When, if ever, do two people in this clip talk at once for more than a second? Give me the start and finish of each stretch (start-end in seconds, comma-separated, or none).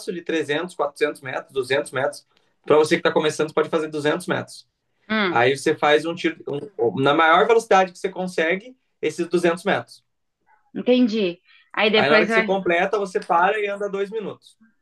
none